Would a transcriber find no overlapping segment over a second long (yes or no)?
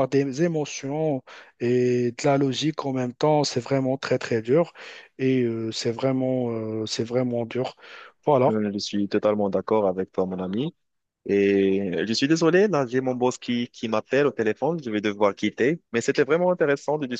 yes